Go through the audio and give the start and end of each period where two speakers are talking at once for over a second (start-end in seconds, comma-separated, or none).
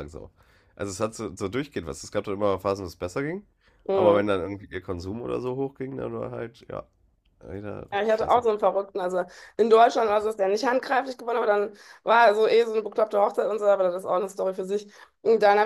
none